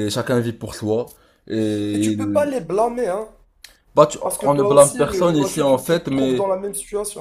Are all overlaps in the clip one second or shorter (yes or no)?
no